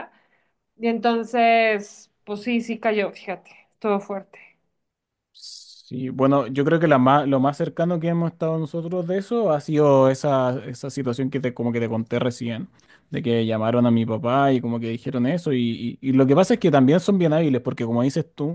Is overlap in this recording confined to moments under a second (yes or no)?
yes